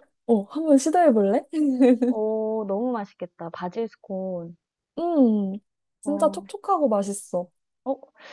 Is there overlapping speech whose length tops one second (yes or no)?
no